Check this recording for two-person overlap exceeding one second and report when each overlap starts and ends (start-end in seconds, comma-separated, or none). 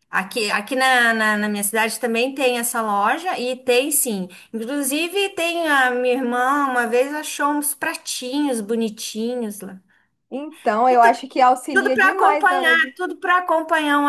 11.7-12.9